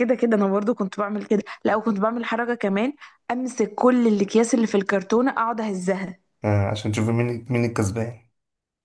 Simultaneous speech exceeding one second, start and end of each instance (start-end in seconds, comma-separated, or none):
none